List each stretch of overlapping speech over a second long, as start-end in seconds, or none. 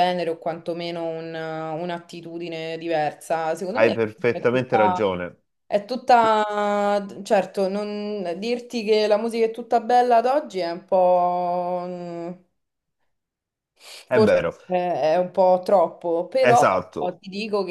3.8-5.1